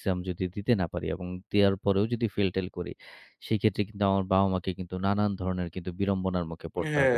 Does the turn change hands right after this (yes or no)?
yes